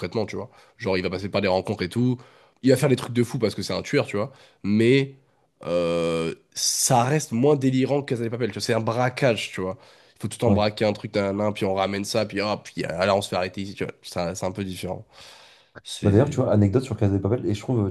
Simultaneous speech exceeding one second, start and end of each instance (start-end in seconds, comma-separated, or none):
none